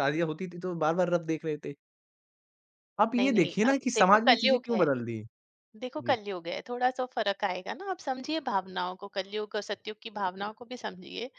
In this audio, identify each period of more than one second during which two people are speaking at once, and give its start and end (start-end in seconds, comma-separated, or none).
3.2-4.8